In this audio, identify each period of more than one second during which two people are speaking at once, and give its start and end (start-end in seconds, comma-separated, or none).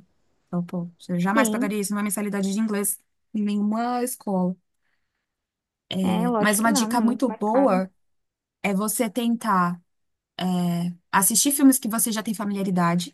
6.4-7.8